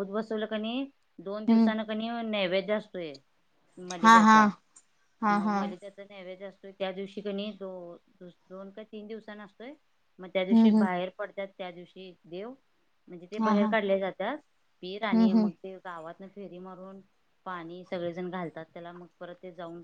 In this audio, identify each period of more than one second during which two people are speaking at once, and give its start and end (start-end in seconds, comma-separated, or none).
none